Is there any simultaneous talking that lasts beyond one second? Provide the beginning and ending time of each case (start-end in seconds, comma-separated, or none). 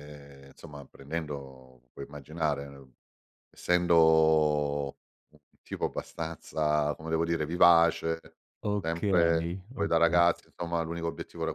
8.8-10.2